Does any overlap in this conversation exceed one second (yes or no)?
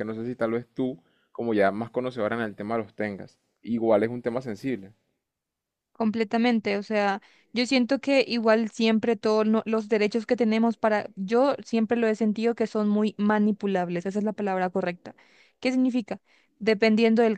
no